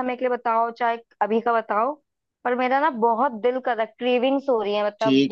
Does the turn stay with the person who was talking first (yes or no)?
no